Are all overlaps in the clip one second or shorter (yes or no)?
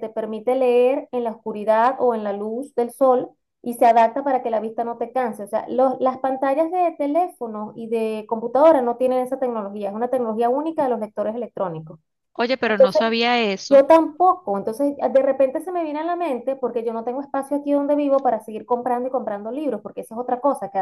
yes